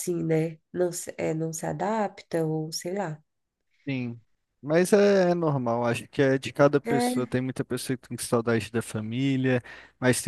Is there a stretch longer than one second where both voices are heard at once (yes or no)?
no